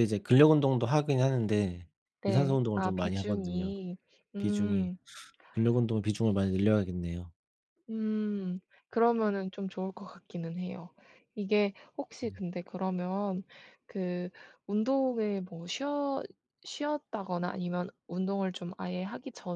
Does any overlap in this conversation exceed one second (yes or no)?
yes